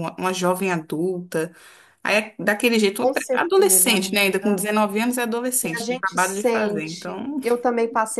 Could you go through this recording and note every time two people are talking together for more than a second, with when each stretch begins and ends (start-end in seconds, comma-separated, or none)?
3.0-4.6, 5.6-7.4